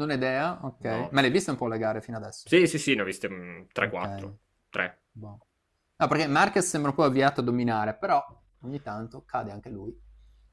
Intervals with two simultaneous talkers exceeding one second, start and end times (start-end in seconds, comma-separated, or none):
none